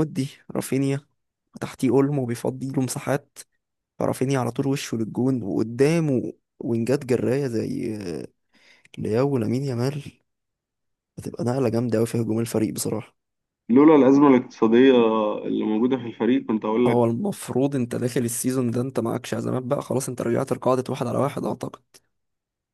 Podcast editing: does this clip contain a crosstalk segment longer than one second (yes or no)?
no